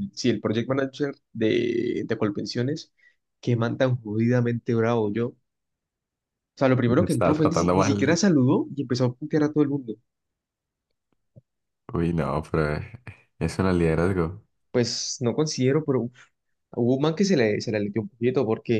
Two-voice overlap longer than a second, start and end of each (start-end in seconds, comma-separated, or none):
7.0-8.2